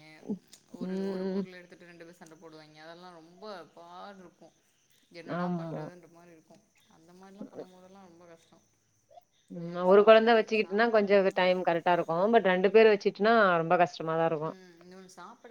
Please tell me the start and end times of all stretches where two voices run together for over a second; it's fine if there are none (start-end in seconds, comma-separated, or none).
9.6-11.4